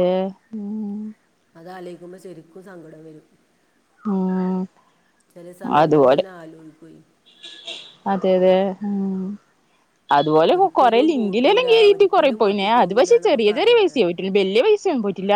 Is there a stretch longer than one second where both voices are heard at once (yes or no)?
yes